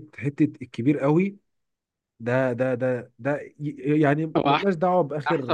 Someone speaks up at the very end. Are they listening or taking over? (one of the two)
taking over